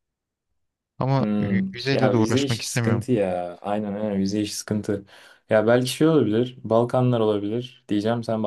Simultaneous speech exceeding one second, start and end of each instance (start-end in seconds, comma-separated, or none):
1.2-3.1